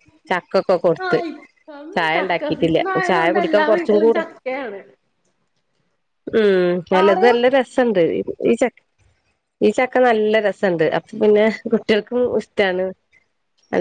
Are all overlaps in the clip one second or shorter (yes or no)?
no